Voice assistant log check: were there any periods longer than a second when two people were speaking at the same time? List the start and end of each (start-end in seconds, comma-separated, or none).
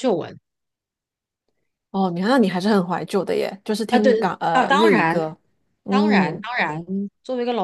3.9-5.2